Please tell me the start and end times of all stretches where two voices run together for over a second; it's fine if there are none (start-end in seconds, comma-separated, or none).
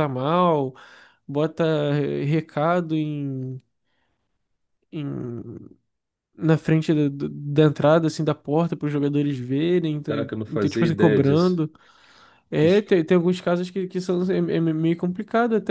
10.1-11.6